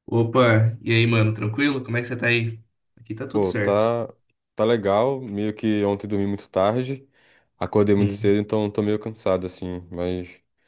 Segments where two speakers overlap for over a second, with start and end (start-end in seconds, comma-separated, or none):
none